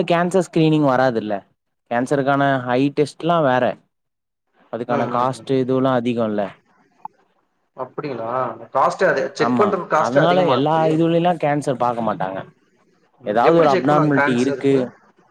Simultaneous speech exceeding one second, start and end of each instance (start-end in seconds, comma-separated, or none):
13.3-14.7